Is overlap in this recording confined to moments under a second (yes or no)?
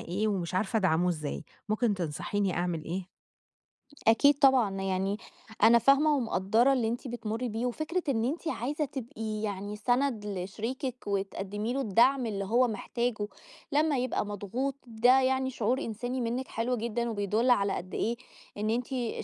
yes